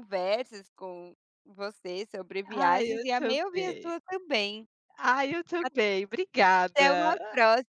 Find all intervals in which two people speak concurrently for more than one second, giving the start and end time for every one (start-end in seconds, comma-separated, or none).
2.5-3.9